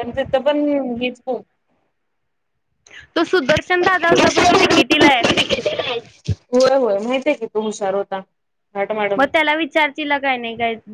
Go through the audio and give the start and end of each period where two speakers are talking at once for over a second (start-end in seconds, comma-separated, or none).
none